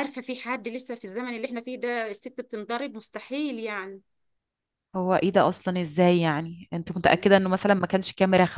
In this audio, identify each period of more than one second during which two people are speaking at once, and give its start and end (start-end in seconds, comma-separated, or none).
none